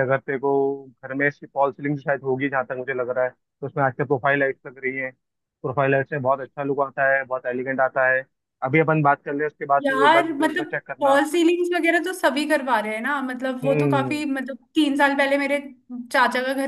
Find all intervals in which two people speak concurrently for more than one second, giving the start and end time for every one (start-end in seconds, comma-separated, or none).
9.8-11.2